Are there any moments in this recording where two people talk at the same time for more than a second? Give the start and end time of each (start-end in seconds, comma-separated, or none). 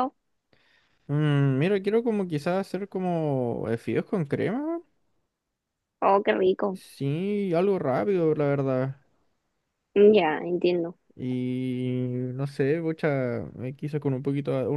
none